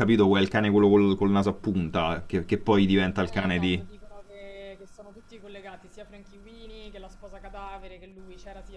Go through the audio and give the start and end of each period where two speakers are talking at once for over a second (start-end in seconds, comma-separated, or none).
none